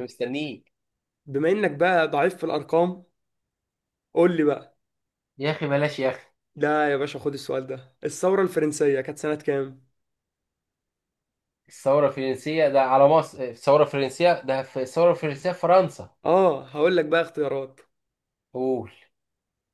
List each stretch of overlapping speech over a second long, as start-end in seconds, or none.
none